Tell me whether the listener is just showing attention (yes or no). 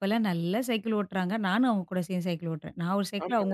no